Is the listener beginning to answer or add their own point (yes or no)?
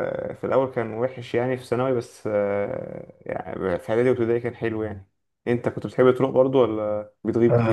yes